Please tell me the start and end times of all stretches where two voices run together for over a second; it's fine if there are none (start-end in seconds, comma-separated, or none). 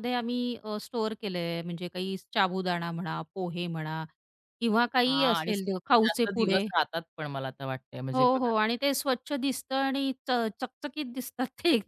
5.1-6.7